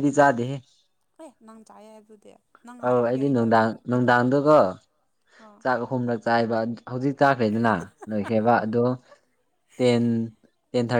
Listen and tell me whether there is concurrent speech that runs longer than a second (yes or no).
yes